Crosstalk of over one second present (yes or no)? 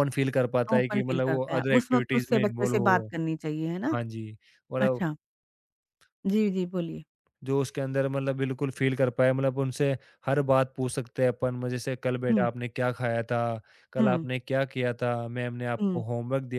yes